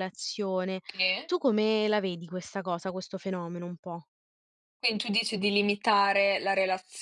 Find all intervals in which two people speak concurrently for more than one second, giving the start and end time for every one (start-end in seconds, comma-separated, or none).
none